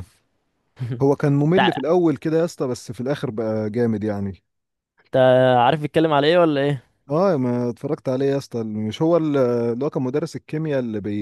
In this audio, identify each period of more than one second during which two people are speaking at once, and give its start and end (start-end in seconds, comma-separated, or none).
none